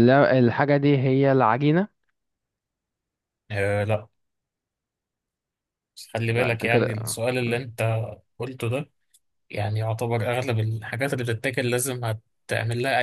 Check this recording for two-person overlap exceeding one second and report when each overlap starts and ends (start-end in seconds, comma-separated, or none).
6.2-7.6